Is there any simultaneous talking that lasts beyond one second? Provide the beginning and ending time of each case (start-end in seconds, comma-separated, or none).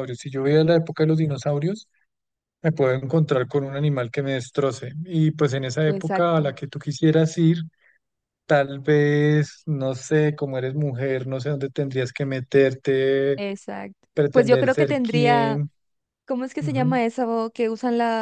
14.1-15.6